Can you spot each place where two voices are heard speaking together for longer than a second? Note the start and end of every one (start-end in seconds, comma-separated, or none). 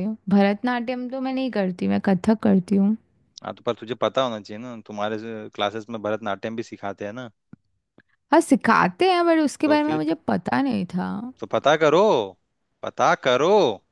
none